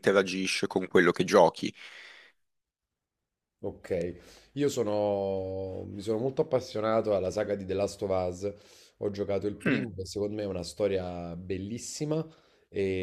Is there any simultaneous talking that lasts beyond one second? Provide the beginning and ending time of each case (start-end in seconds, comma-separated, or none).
none